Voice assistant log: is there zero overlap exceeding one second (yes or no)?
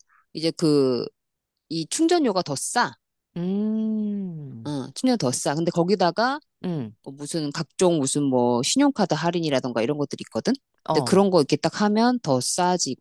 yes